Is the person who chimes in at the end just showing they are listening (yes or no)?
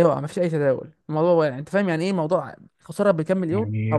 no